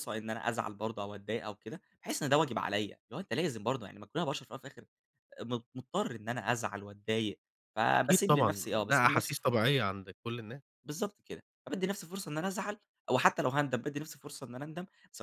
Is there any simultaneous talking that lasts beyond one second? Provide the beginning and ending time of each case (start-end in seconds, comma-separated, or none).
7.9-9.6